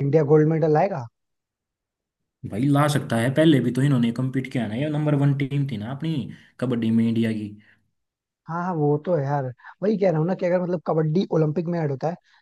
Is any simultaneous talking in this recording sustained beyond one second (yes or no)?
no